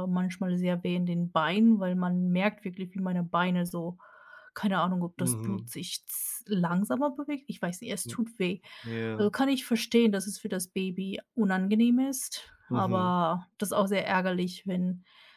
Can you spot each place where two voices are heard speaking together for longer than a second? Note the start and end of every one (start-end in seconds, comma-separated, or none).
none